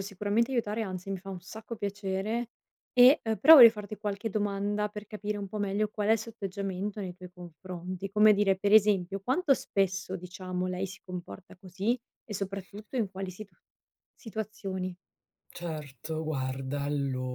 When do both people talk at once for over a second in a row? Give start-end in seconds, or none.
none